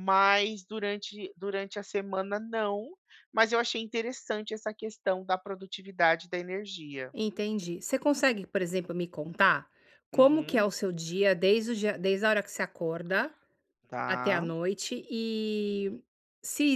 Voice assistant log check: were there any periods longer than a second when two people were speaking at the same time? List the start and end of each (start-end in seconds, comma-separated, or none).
none